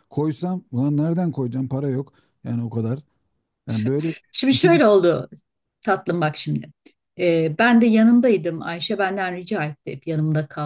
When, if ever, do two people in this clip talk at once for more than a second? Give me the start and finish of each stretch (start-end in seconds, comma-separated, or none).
none